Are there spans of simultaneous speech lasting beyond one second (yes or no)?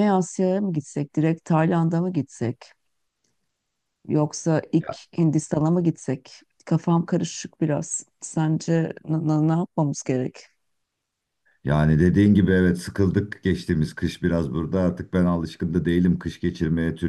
no